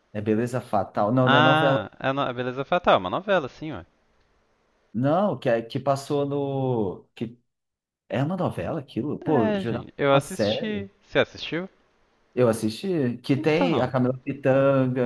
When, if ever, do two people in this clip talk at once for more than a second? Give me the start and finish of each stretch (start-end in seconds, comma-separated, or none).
9.3-10.9